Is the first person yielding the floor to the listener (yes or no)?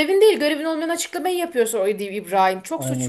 yes